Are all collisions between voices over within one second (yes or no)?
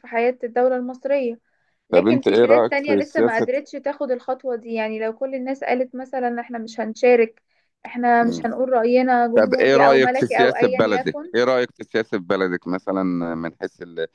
no